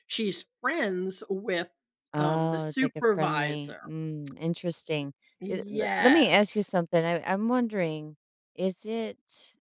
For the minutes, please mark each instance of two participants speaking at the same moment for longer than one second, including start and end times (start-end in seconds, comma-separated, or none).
2.2-3.8, 5.4-6.7